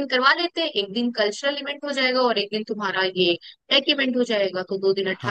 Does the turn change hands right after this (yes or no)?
no